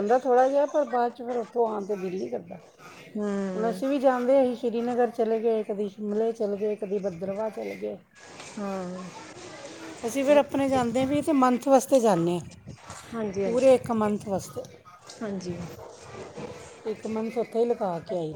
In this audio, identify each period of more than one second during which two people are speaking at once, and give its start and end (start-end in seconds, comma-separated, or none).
none